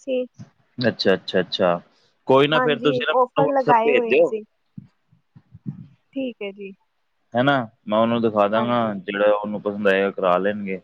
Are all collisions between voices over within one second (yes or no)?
no